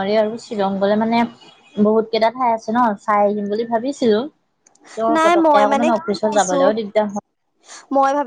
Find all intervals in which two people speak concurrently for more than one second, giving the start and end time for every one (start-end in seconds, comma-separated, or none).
5.1-6.6